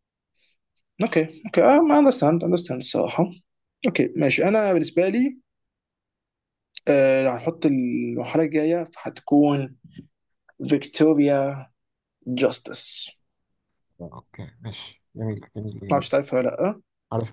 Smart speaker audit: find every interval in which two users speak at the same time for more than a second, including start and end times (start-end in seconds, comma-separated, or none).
none